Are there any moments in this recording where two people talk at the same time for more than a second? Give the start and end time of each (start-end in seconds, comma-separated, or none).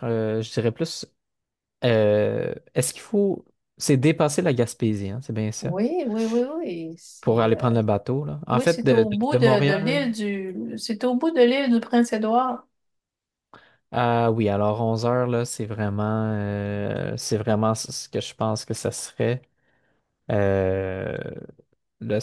8.5-10.0